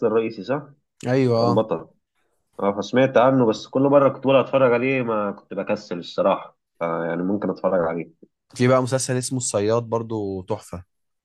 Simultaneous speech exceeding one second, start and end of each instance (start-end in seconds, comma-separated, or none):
none